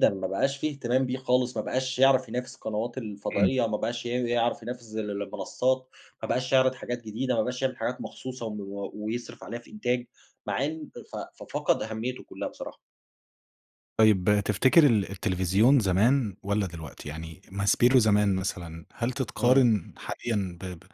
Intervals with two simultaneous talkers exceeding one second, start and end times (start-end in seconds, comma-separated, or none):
none